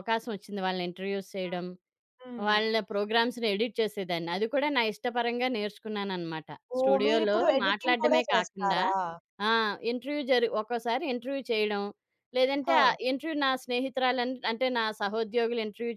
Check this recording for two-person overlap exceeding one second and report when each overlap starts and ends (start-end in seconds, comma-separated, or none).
6.8-8.8